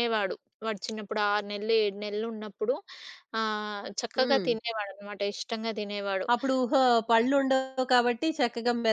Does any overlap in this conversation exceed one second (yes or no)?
no